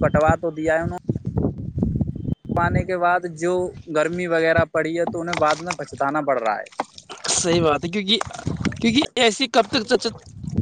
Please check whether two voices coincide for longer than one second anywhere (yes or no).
no